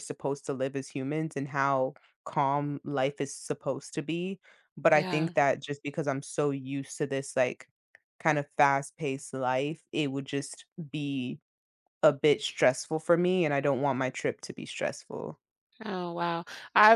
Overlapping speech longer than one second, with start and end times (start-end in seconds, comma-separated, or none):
none